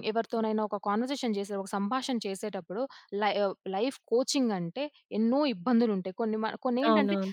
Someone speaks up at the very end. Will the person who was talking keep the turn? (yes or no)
yes